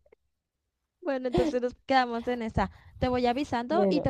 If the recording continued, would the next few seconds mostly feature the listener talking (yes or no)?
no